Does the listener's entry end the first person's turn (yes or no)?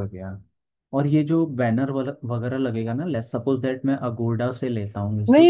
yes